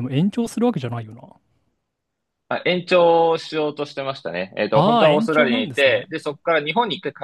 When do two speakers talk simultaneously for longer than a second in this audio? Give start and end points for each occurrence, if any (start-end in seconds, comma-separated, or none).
4.7-6.1